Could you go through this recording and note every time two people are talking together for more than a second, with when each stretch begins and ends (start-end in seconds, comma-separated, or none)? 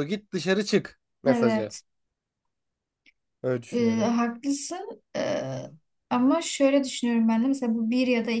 none